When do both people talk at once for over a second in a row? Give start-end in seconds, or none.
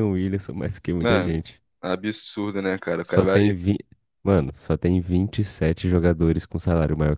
none